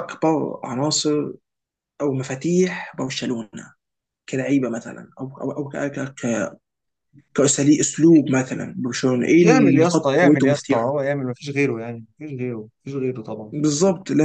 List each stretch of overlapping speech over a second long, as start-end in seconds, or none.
9.3-11.0